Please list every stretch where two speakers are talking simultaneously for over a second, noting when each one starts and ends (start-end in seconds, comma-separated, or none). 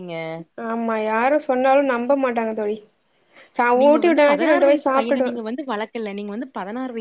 3.8-5.3